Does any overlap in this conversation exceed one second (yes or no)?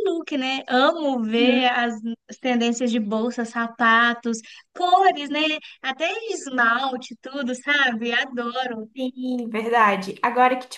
no